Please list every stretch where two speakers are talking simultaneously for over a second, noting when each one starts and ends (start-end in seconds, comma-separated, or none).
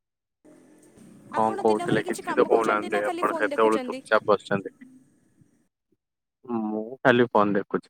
1.4-4.0